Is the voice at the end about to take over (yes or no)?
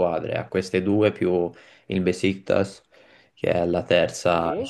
no